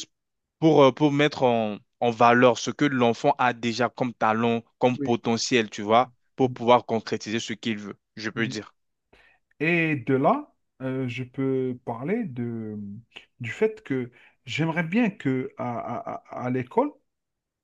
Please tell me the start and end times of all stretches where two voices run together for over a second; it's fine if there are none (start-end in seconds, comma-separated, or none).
none